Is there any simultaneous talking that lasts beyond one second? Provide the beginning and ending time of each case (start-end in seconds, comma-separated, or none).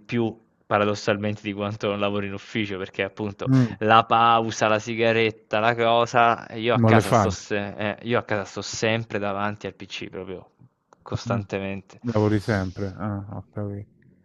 none